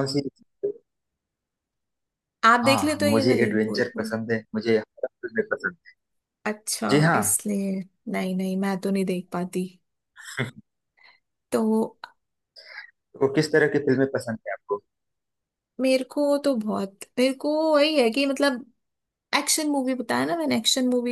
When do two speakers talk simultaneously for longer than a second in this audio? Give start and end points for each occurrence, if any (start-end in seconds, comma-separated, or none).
2.6-4.1